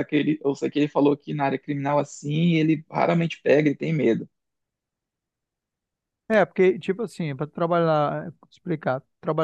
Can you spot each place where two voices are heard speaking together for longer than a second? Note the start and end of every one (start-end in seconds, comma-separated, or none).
none